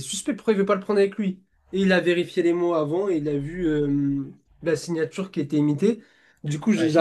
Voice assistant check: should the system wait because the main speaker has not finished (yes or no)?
yes